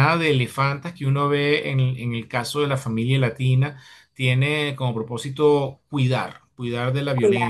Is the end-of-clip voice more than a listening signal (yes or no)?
no